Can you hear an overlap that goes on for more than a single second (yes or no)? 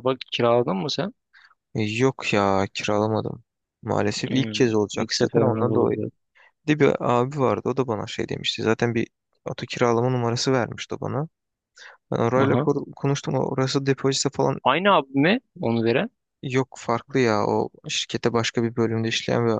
yes